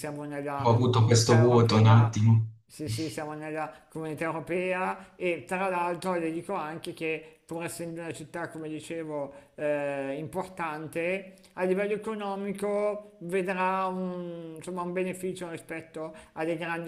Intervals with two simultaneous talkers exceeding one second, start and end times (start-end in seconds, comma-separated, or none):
0.6-2.2